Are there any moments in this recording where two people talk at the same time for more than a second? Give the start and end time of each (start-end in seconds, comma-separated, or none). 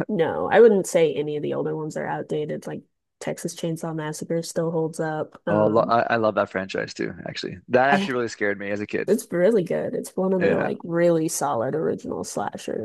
none